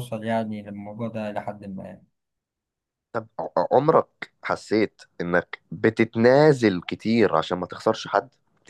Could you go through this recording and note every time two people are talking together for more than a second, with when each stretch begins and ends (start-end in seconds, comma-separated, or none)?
none